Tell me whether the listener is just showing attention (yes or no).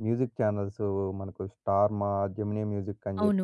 no